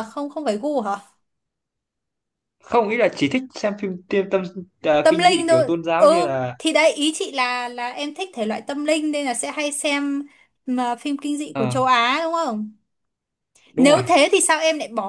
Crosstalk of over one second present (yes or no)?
yes